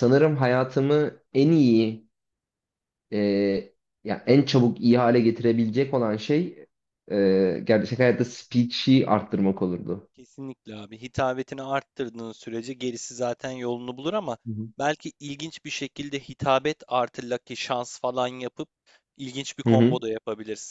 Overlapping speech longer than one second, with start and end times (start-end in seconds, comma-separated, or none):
none